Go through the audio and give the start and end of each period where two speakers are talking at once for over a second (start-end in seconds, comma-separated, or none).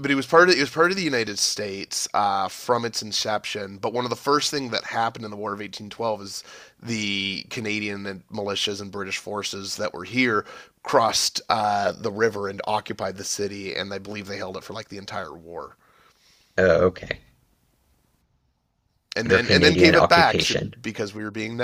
19.3-20.7